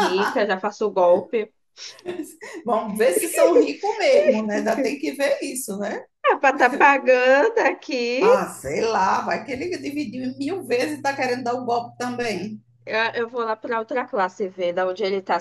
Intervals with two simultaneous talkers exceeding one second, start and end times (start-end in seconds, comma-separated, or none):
none